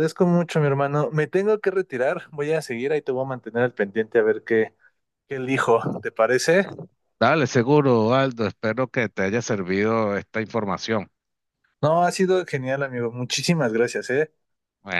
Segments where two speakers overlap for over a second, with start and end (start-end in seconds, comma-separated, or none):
none